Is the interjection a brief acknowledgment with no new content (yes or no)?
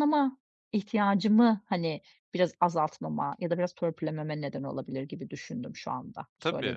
no